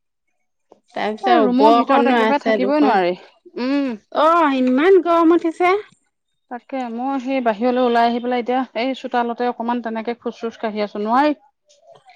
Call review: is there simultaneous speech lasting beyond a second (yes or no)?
yes